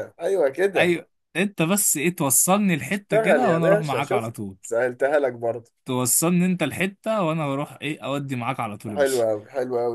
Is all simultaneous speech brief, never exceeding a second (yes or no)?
no